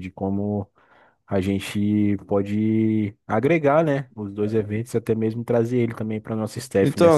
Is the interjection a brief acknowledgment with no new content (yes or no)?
no